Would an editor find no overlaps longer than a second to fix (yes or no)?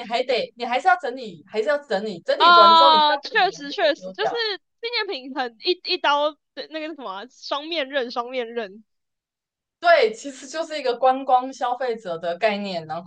no